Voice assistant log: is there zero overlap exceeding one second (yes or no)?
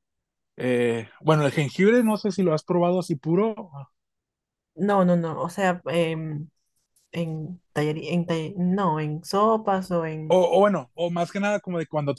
yes